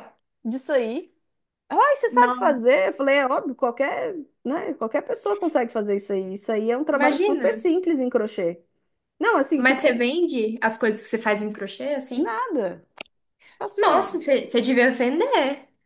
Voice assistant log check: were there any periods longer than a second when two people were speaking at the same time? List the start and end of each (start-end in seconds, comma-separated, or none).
none